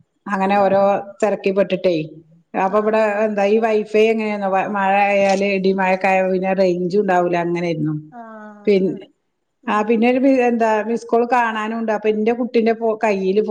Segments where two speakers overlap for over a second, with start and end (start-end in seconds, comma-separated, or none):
none